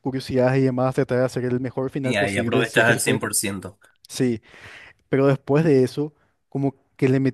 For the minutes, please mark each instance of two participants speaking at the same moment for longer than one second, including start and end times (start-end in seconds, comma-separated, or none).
2.0-3.2